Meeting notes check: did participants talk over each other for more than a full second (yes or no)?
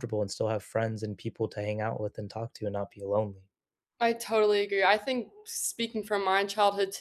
no